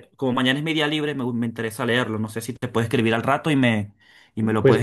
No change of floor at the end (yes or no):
no